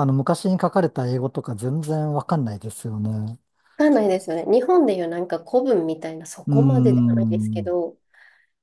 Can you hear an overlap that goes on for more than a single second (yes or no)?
yes